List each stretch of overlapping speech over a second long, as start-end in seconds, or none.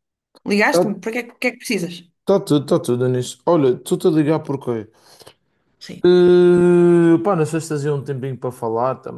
none